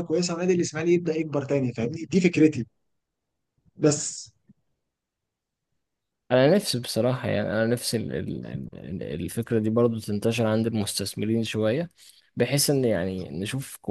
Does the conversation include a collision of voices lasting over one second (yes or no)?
no